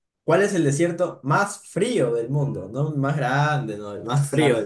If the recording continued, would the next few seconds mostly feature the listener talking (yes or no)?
yes